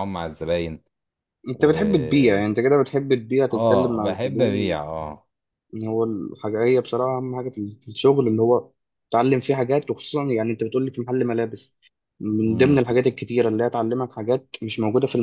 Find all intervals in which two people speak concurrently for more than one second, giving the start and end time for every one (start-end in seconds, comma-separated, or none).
3.5-4.8